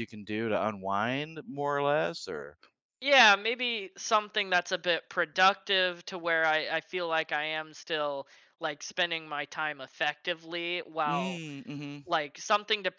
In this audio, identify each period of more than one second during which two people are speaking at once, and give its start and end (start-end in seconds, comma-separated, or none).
none